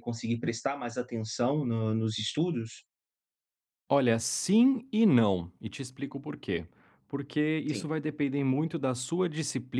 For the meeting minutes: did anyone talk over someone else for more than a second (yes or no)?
no